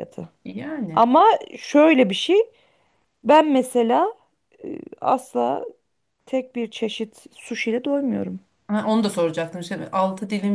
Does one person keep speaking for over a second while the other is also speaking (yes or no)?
no